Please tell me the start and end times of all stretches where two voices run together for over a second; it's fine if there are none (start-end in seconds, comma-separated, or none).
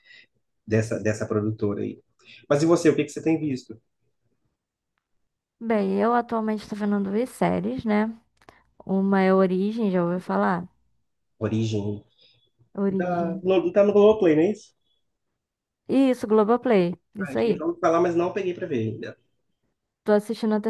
none